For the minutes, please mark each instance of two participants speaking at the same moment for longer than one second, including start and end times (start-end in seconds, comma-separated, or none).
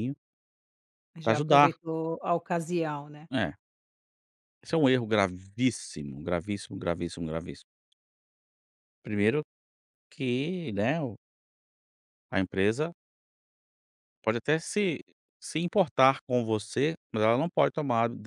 none